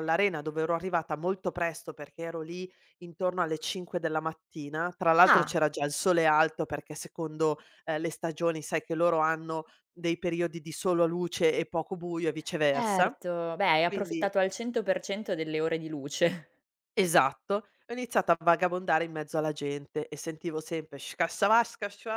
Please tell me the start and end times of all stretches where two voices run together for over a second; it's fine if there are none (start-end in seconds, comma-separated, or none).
none